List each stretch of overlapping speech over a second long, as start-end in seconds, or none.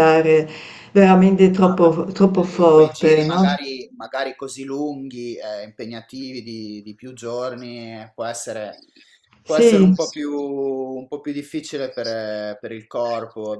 1.6-3.5